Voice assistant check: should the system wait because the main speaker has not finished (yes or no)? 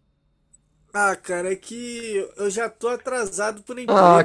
no